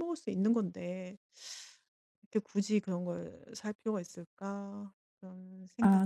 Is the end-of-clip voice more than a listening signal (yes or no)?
yes